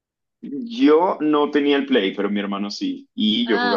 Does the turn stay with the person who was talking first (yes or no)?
yes